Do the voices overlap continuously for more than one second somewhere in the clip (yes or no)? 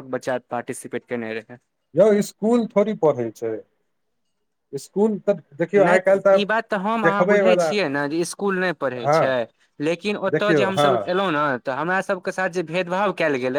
no